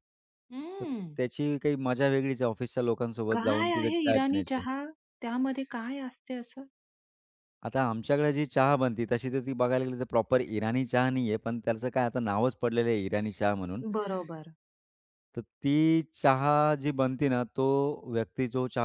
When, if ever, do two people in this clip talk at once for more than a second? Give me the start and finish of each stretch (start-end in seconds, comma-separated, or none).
3.3-4.6